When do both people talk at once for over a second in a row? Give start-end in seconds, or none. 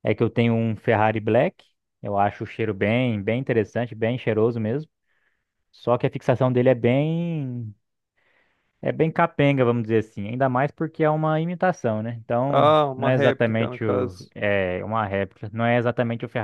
12.5-14.3